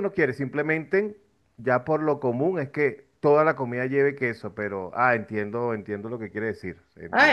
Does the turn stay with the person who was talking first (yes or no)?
no